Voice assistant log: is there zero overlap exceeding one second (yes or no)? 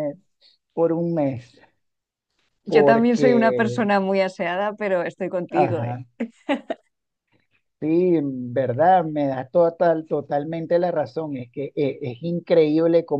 no